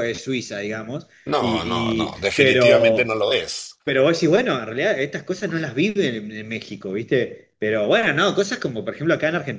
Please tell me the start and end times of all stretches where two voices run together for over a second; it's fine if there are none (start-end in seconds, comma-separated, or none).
1.3-3.1